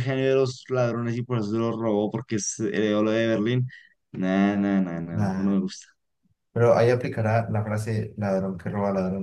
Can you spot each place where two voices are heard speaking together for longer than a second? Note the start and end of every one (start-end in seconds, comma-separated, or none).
none